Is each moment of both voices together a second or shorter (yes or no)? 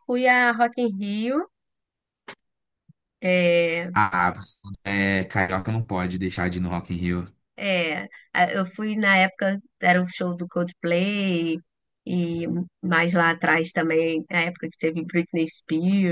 yes